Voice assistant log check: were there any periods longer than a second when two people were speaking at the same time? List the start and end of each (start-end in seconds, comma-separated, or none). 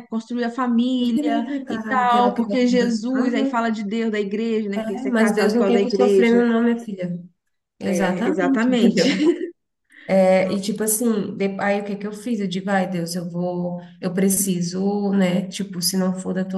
1.0-3.7, 4.7-6.4, 7.8-9.1